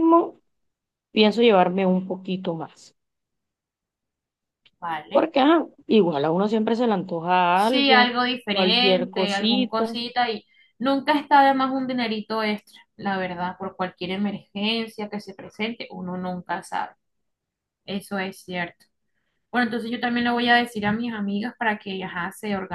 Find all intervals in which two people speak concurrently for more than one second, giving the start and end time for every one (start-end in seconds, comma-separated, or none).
7.5-9.9